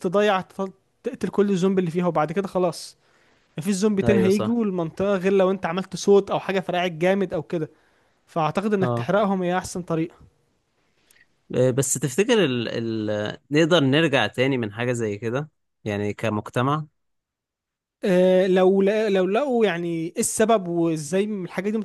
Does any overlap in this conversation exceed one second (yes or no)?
no